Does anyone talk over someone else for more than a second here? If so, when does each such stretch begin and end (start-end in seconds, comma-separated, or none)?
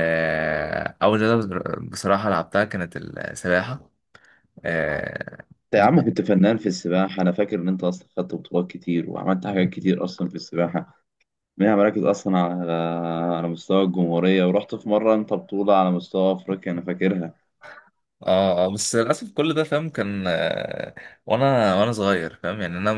none